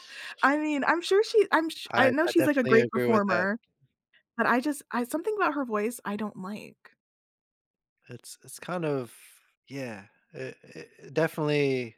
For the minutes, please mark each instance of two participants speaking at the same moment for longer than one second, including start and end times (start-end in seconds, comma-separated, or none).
1.9-3.5